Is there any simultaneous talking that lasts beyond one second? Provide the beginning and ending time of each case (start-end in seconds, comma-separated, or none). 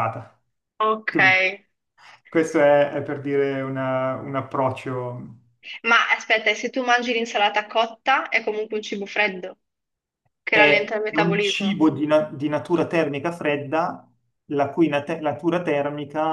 10.5-11.8